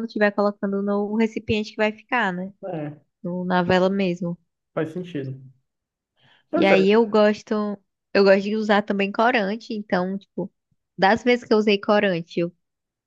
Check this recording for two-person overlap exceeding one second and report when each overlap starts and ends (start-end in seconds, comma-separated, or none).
none